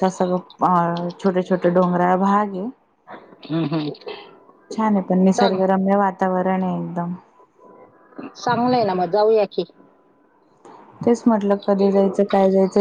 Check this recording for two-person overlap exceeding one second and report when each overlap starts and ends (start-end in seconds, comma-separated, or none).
none